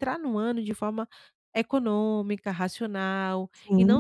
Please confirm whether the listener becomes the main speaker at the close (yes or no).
no